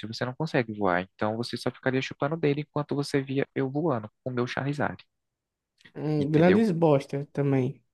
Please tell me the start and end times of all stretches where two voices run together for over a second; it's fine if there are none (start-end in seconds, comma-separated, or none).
none